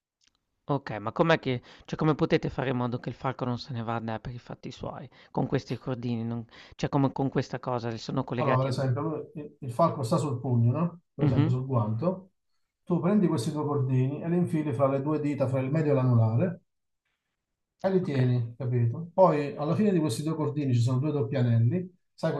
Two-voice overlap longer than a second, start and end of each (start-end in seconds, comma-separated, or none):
none